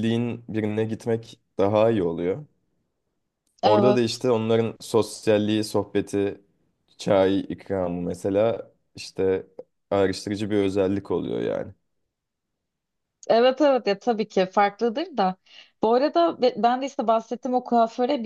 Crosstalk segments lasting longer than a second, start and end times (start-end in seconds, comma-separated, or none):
none